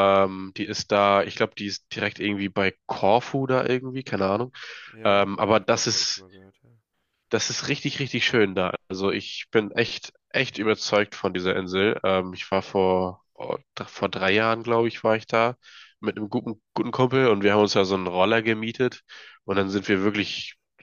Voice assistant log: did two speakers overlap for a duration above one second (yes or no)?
yes